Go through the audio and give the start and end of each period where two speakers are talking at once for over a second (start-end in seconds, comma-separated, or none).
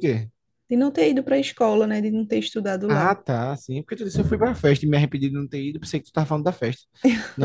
none